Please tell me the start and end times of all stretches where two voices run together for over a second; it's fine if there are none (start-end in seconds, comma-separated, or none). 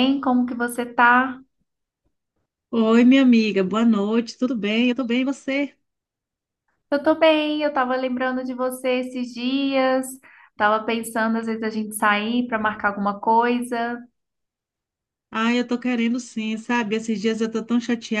none